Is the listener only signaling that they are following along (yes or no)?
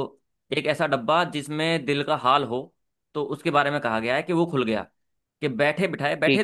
yes